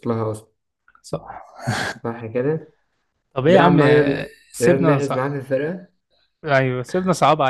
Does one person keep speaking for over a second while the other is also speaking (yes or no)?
yes